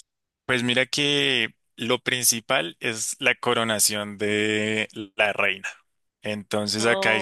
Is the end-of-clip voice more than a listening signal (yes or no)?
no